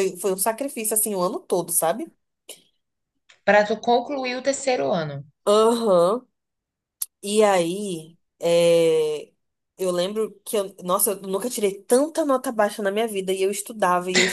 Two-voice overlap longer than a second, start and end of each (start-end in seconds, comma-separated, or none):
none